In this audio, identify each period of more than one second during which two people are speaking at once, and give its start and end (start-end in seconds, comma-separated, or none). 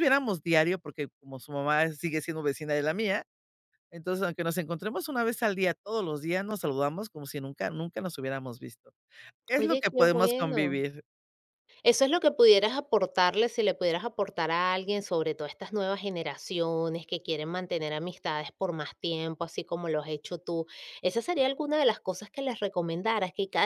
9.5-10.8